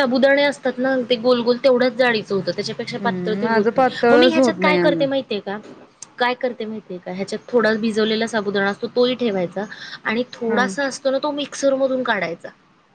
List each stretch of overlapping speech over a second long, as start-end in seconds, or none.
3.0-5.1